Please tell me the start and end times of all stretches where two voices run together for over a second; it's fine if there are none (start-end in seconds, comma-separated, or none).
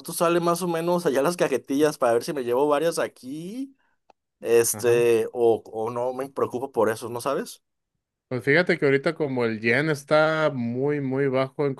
none